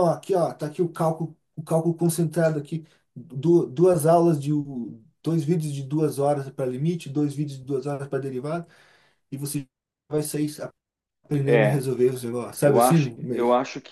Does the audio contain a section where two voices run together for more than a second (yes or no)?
no